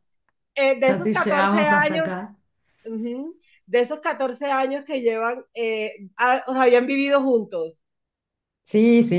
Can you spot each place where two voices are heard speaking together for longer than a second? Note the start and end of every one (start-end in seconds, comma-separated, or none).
0.8-2.1